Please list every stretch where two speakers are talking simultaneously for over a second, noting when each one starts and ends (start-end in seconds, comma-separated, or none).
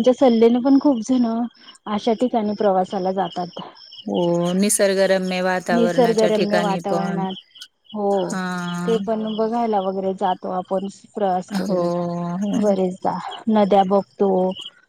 5.7-7.2